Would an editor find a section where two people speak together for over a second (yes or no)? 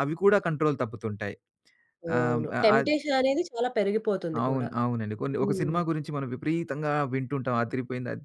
no